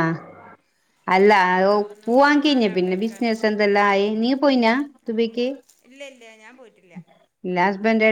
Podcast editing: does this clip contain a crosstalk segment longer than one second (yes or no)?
yes